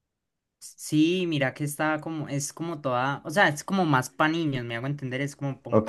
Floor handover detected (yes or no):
yes